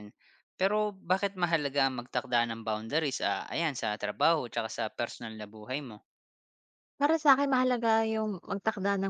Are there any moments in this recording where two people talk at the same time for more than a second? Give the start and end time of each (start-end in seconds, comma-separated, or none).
none